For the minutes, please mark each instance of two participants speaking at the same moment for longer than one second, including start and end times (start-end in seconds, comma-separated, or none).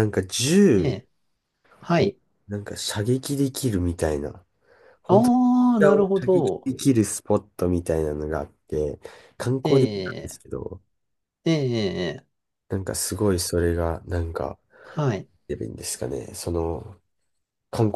5.1-6.7